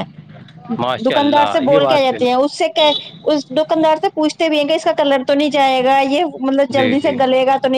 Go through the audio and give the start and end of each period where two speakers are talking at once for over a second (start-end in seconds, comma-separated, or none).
1.1-2.4